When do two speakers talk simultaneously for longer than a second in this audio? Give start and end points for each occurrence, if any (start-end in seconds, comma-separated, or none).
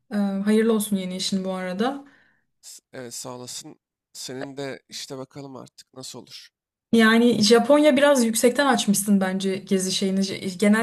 none